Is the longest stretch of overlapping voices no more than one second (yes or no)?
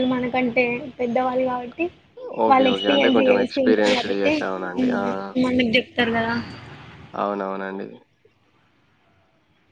no